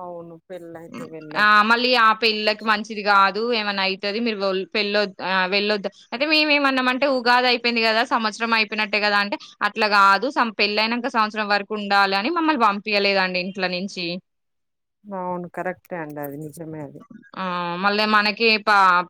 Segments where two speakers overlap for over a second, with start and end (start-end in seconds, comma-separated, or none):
none